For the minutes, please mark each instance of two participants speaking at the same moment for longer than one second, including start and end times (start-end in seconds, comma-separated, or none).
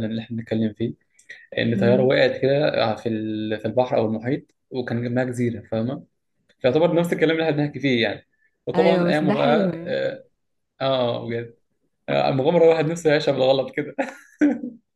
8.8-10.0